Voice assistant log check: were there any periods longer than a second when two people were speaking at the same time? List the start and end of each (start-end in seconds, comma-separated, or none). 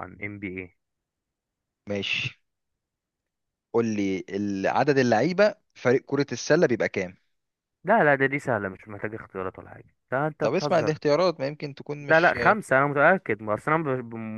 none